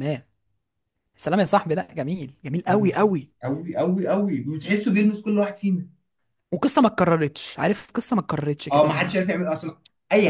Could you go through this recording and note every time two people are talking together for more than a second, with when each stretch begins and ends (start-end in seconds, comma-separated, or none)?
none